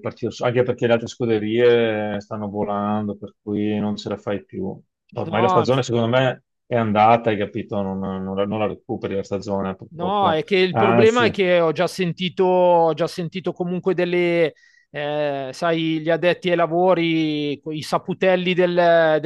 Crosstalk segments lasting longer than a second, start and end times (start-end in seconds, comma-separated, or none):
9.9-11.2